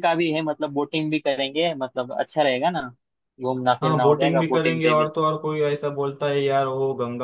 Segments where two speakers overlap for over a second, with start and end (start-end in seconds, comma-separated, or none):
3.8-5.1